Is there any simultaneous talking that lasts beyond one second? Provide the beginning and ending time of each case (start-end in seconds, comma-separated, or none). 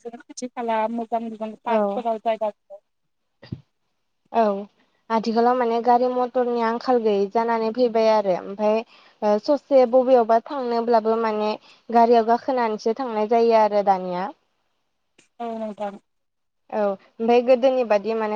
none